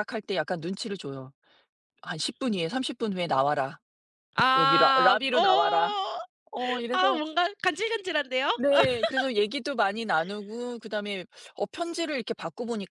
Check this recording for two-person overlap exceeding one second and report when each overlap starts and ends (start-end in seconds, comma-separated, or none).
4.6-6.0